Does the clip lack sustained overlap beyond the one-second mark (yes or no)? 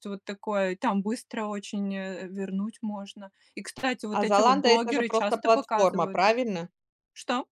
no